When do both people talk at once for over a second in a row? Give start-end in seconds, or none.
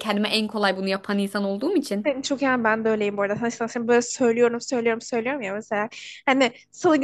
none